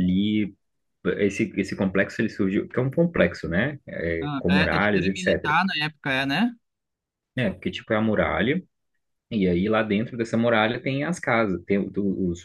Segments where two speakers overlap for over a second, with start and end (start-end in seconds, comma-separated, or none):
4.2-5.6